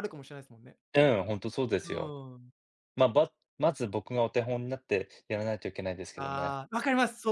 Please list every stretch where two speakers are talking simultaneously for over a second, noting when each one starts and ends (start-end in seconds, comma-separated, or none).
none